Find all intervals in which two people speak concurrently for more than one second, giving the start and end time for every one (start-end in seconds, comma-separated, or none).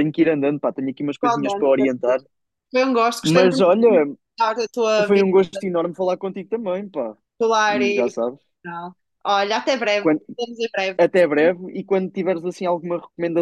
none